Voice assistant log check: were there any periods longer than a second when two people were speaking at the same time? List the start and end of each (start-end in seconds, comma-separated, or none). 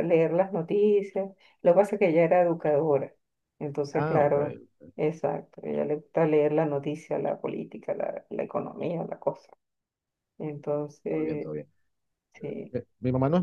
none